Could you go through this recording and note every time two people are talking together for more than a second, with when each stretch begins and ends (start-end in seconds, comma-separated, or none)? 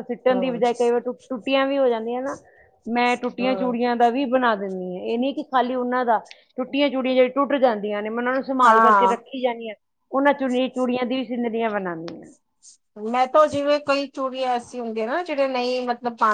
none